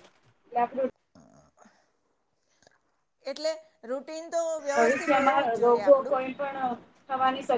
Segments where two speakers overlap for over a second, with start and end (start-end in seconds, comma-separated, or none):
4.7-6.2